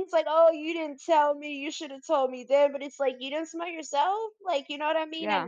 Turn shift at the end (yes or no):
no